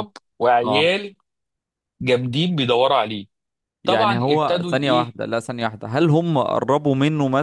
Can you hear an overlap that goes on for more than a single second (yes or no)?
yes